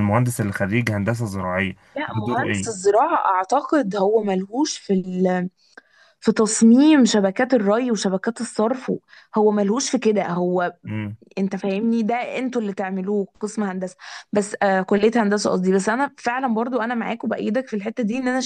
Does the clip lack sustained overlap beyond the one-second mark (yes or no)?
yes